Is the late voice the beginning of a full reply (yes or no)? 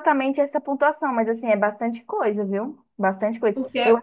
no